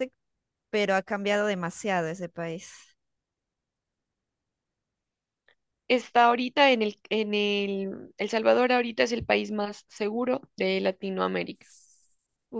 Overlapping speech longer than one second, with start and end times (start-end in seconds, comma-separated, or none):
none